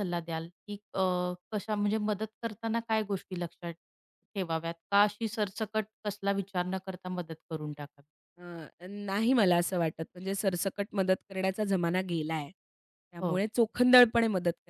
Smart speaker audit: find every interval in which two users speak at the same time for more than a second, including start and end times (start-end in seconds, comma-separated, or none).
none